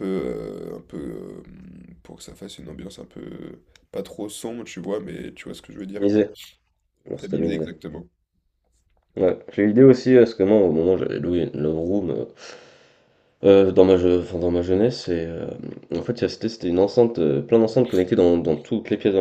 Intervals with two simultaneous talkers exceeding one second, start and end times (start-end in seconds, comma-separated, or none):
none